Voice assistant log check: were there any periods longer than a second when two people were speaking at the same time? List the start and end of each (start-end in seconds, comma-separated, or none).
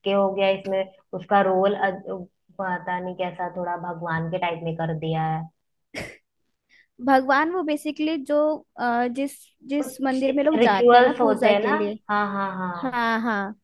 9.8-12.0